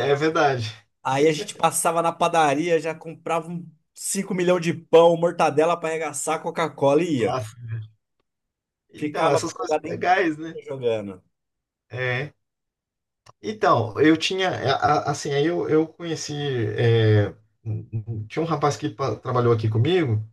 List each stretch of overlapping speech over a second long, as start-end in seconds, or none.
9.0-10.6